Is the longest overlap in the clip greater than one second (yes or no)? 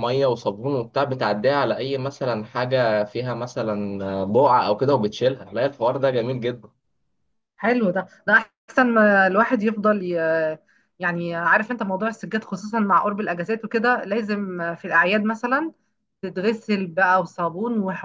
no